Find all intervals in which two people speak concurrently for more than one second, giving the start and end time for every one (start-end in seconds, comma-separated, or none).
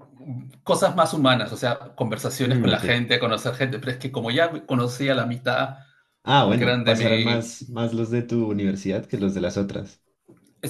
6.4-7.7